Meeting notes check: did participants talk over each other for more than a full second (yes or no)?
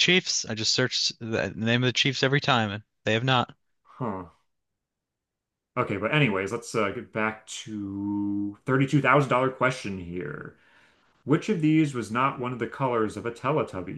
no